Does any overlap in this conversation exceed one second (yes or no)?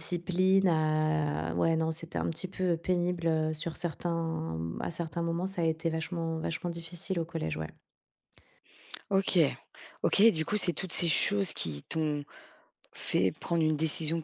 no